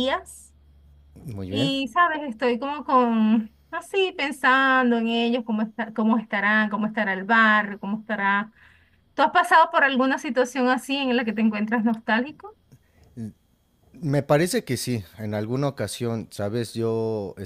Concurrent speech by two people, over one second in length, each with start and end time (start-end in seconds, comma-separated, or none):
none